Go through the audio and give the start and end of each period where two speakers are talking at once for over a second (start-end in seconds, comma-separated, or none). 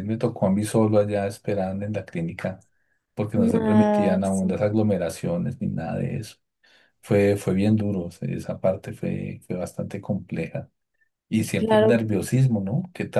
3.4-4.6